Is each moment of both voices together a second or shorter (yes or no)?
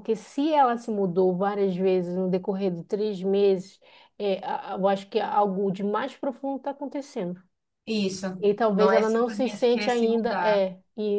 no